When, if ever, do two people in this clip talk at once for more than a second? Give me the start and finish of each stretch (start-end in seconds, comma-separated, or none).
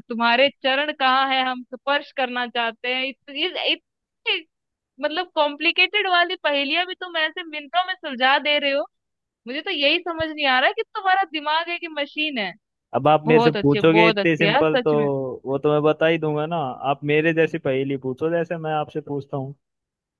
13.3-14.9